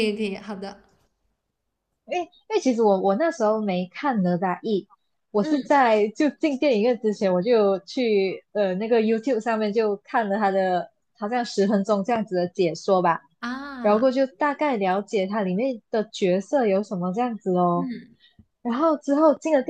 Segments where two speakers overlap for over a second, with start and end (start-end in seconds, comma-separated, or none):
none